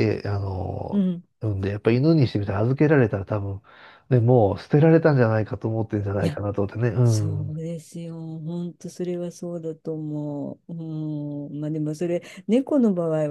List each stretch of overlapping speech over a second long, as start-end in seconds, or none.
none